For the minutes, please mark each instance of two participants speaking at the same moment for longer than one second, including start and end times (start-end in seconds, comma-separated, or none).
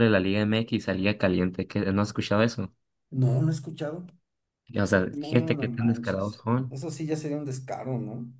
5.1-6.8